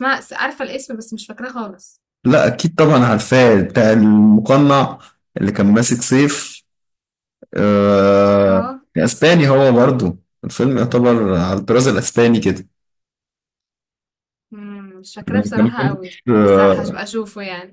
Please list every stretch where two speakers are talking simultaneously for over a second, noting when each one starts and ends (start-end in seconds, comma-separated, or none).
15.3-17.0